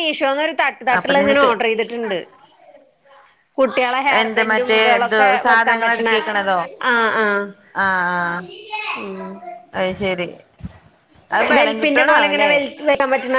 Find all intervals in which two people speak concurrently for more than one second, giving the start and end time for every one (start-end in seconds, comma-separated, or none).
4.2-6.2